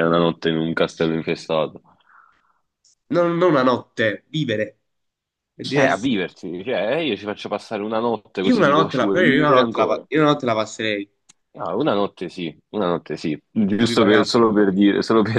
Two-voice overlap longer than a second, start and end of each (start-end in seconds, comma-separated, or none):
8.5-10.1